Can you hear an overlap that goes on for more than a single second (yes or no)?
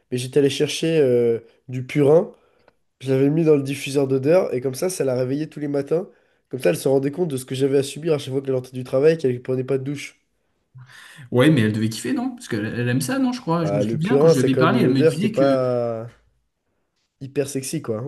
yes